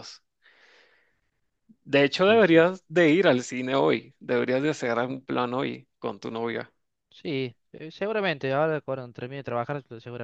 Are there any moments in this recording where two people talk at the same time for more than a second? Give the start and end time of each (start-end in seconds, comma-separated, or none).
none